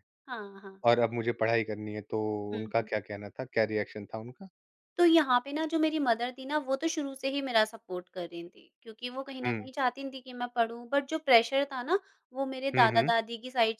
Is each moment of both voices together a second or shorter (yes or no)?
yes